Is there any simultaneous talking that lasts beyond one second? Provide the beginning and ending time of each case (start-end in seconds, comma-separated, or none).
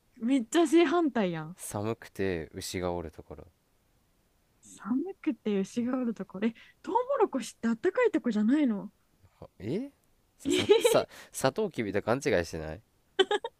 none